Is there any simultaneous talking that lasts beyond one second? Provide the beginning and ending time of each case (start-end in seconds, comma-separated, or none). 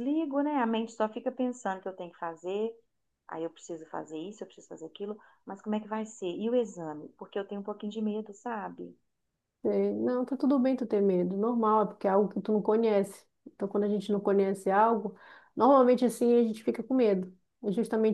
none